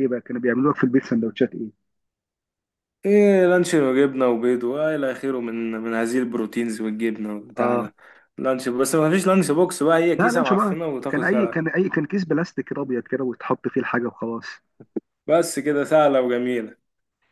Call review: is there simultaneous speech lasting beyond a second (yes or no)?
yes